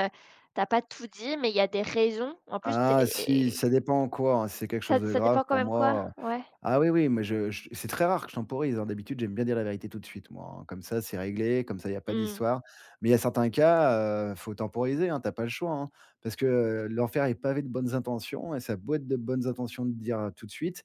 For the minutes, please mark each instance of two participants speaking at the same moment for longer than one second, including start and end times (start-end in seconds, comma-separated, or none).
4.9-6.1